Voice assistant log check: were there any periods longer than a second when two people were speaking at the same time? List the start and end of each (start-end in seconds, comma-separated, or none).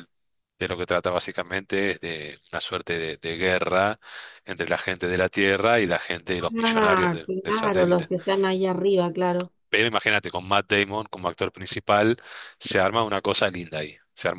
6.6-8.1